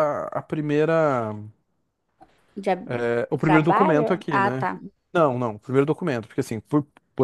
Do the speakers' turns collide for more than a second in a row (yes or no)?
yes